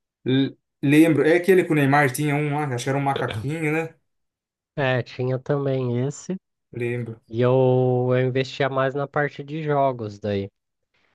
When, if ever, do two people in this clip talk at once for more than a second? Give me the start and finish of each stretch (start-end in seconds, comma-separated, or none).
none